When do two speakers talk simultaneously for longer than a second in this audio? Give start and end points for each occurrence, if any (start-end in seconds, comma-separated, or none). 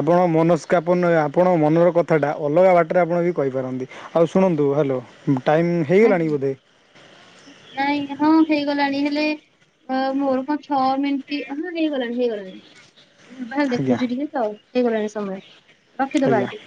none